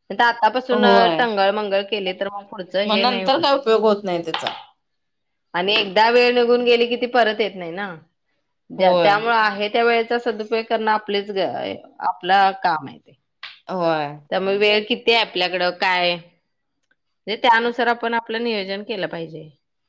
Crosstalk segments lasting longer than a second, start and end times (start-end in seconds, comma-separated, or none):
none